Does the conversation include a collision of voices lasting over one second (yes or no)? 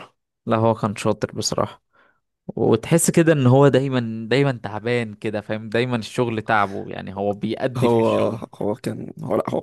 no